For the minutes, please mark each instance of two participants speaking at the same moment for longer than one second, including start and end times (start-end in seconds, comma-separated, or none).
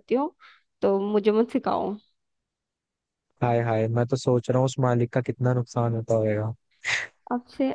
none